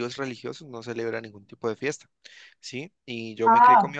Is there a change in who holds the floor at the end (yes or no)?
no